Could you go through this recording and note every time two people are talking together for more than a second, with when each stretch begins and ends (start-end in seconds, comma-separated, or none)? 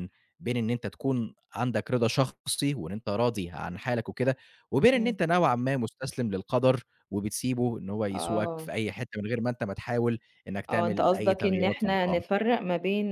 10.7-12.2